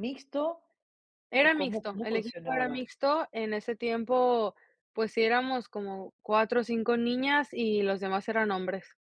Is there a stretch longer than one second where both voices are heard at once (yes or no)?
yes